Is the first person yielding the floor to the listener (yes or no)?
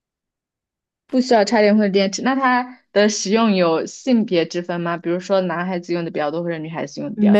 yes